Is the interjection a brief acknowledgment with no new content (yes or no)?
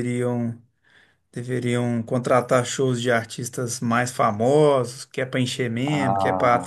yes